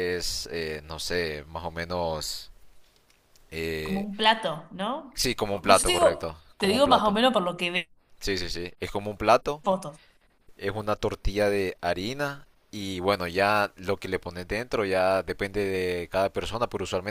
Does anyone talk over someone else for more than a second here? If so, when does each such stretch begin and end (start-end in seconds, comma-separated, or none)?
5.1-7.2